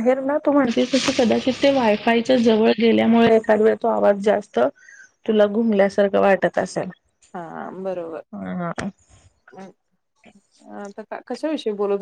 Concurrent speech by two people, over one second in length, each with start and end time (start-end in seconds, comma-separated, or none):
none